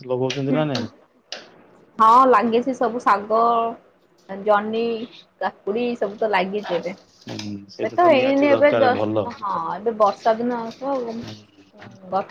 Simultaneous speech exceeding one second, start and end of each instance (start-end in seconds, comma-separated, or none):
7.3-9.2